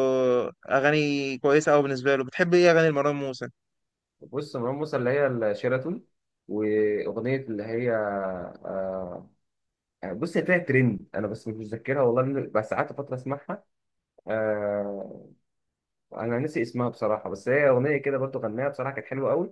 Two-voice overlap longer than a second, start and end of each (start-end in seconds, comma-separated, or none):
none